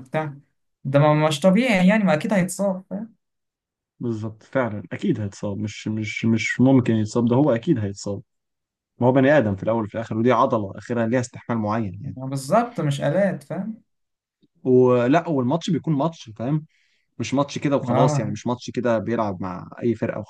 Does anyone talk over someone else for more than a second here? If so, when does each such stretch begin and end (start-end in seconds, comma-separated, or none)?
none